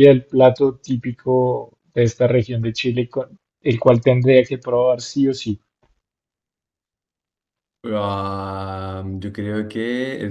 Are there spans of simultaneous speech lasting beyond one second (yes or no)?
no